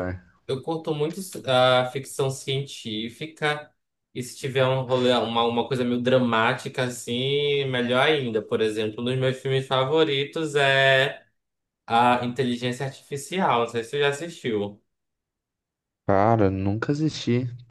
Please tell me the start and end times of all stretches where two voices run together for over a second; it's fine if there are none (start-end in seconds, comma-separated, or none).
none